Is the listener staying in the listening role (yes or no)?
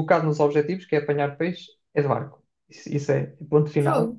yes